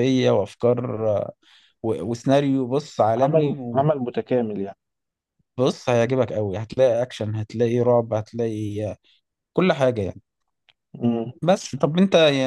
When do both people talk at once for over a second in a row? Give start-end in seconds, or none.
none